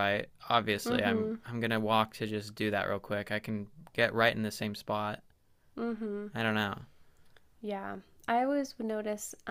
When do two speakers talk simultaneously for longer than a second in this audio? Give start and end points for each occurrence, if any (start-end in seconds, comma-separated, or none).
none